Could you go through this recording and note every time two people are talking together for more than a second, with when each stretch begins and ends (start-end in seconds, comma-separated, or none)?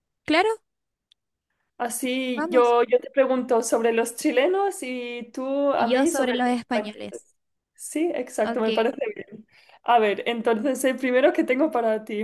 5.8-7.3